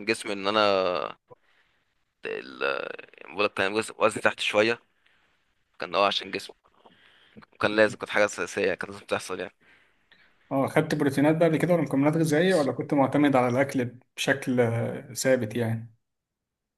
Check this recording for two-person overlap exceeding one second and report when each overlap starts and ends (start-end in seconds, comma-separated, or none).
none